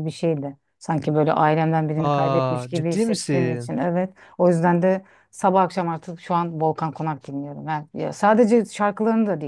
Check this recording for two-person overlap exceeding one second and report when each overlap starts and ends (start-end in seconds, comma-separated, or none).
2.0-3.7